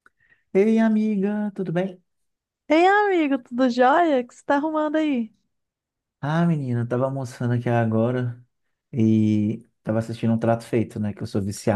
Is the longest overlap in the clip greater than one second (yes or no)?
no